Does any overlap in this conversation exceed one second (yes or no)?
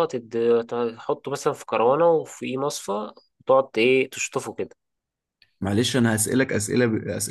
no